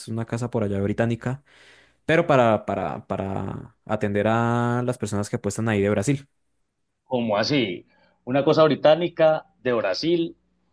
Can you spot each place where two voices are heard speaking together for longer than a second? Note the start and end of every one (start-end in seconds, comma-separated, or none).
none